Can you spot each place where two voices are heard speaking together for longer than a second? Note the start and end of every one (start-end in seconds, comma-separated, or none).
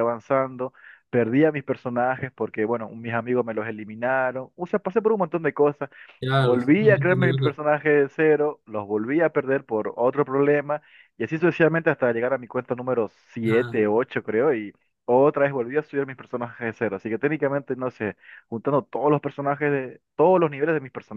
6.4-7.6